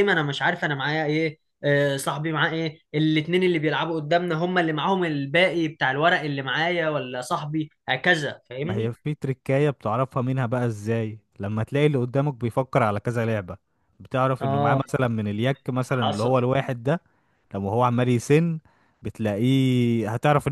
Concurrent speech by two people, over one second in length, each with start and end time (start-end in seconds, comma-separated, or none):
none